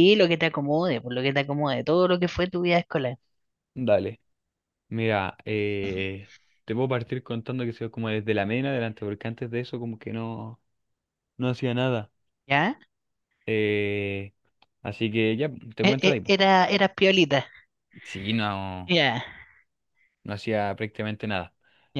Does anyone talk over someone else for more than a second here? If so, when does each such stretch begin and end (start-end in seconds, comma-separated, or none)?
none